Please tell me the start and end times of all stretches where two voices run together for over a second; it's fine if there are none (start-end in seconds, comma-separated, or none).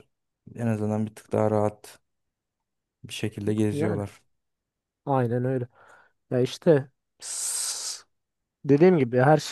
none